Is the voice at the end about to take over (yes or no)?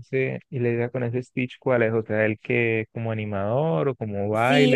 yes